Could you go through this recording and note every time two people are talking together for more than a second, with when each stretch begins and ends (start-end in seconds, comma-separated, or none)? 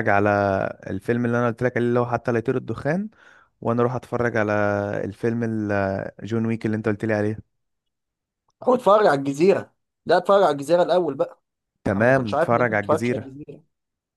11.9-13.3